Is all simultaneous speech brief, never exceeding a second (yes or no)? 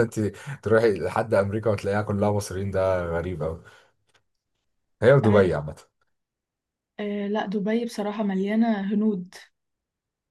yes